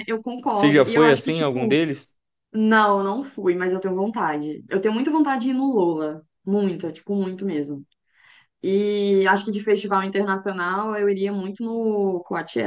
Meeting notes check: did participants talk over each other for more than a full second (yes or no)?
yes